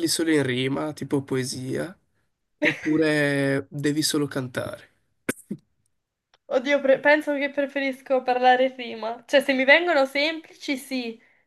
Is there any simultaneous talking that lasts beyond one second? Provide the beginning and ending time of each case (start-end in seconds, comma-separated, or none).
none